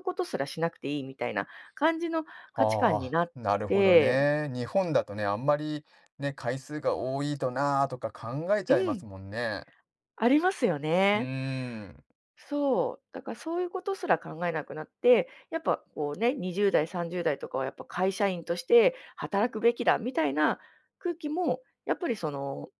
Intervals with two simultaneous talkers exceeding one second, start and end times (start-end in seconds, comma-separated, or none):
2.5-4.3